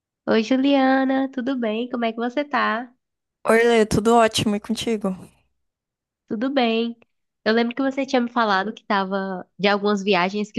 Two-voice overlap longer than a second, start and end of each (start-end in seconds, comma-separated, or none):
none